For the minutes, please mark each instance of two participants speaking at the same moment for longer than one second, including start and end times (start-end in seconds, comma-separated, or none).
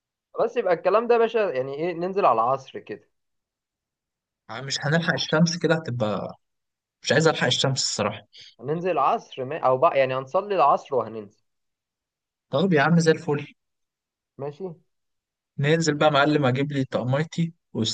none